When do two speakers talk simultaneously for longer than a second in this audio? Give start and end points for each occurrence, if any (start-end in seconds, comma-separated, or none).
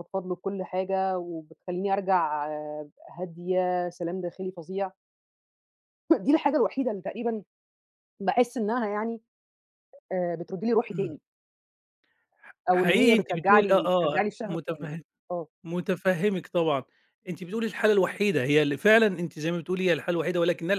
12.7-15.0